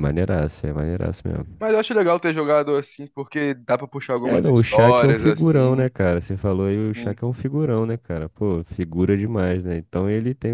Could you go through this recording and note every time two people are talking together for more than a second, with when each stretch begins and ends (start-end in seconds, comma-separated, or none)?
4.2-5.9